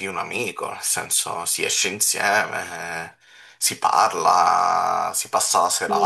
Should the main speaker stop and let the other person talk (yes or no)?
yes